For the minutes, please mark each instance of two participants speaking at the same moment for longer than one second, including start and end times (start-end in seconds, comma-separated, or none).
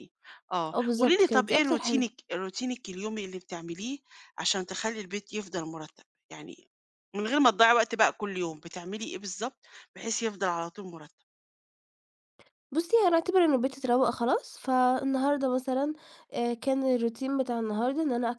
0.7-2.0